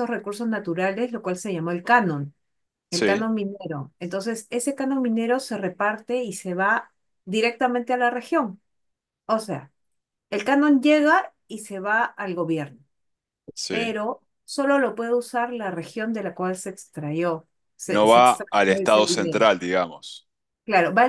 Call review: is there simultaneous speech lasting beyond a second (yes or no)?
yes